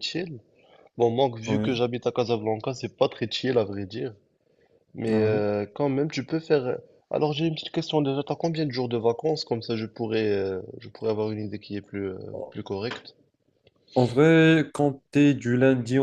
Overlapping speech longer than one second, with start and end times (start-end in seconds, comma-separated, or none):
none